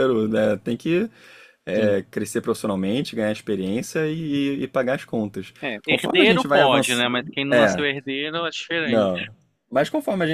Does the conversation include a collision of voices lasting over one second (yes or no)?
yes